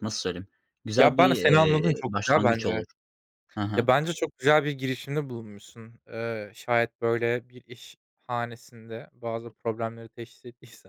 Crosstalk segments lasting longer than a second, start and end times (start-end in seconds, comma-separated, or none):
0.9-2.8